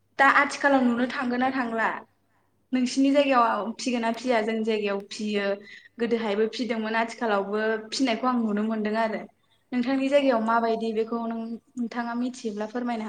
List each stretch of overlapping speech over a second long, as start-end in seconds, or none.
10.2-11.7